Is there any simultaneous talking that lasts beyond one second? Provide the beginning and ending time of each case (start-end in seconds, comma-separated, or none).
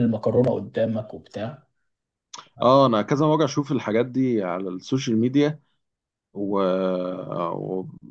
none